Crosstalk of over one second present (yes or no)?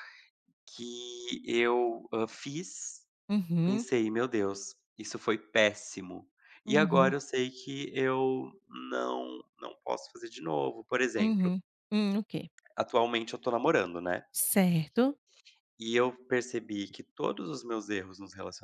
no